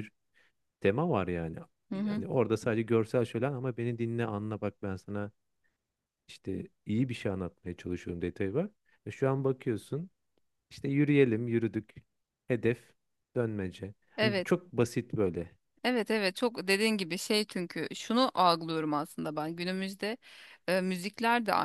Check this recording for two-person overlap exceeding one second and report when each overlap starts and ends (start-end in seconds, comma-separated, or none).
none